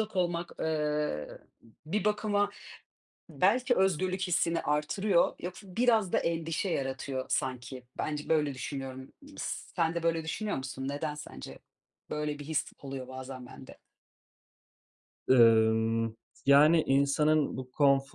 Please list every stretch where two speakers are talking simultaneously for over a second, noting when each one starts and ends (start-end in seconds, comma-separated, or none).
none